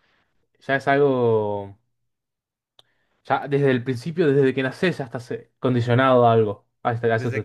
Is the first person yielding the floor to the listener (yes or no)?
yes